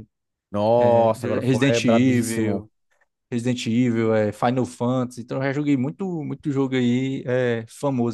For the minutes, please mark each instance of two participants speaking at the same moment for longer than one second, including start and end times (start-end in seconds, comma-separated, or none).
0.8-2.6